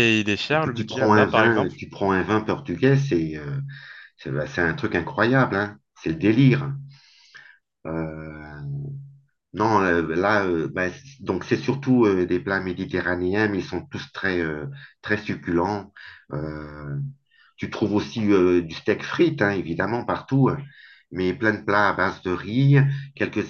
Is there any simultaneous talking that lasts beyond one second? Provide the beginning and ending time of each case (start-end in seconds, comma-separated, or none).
0.5-1.8